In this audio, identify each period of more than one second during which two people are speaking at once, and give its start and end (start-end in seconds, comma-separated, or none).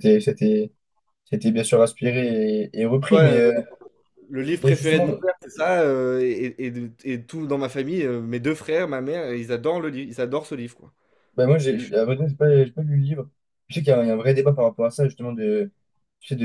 none